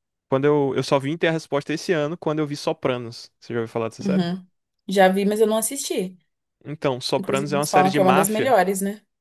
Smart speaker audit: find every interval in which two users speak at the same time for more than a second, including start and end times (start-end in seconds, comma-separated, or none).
7.2-8.6